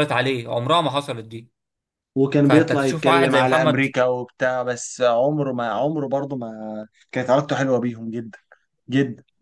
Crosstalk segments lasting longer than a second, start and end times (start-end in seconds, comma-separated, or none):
2.4-3.9